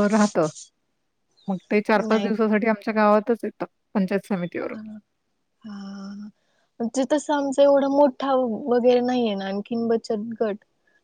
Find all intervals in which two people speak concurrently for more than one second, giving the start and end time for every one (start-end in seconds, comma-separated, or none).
none